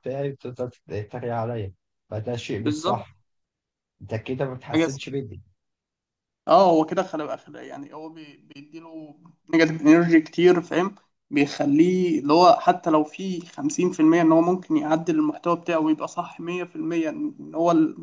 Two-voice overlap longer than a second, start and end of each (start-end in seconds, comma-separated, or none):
none